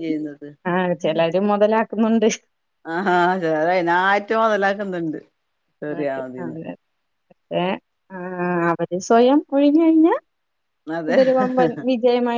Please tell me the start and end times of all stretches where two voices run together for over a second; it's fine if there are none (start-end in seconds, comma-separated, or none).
none